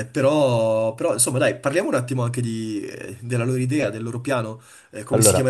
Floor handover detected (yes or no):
no